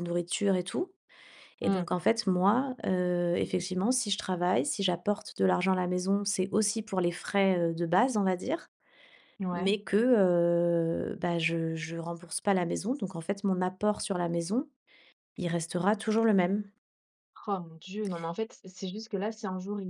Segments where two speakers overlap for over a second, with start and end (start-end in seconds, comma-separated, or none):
none